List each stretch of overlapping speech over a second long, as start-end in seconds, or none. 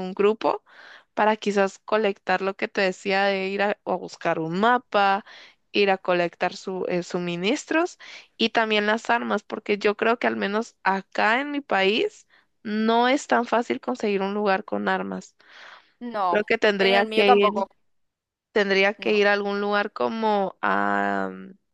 16.3-17.7